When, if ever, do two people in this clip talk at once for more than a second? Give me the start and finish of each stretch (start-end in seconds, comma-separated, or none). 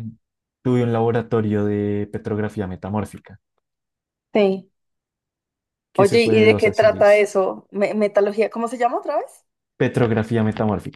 6.0-7.3